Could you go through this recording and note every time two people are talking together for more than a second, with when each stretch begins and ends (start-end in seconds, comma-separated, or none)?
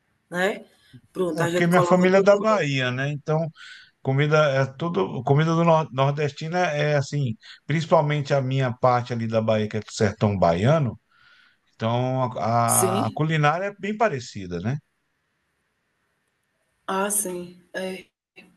1.3-2.6